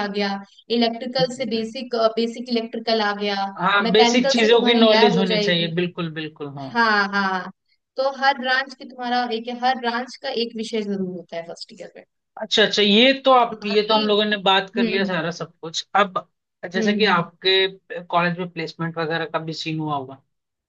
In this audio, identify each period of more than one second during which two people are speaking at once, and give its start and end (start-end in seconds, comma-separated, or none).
3.9-5.7